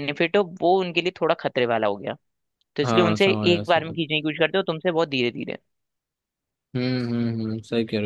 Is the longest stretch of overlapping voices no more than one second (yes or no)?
no